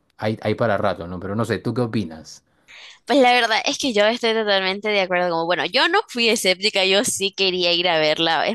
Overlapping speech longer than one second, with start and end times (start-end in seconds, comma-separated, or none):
none